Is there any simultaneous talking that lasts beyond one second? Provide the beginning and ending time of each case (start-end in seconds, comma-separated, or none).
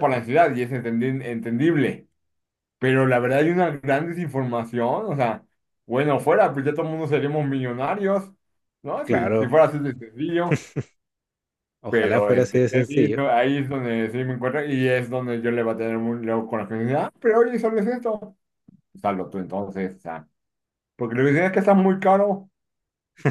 11.9-13.2